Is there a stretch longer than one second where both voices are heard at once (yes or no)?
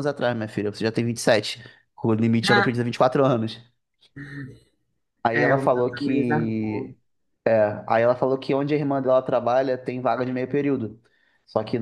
yes